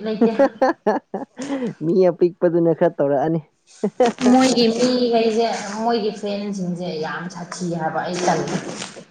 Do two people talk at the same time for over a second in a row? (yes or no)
no